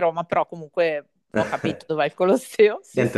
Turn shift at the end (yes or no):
yes